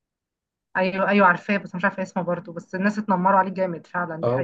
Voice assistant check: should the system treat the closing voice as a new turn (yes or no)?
yes